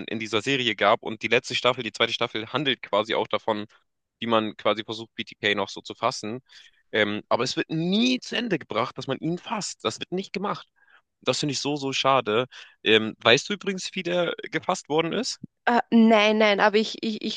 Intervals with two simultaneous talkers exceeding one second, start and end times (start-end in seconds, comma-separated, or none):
none